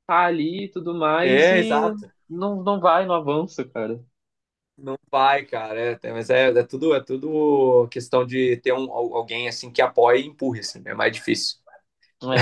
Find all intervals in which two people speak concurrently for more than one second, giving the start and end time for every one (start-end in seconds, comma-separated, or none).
none